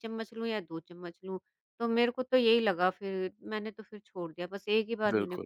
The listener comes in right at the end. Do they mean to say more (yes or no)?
yes